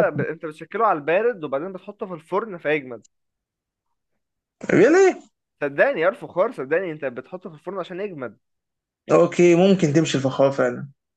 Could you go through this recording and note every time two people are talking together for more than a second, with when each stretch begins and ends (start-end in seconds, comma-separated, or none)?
none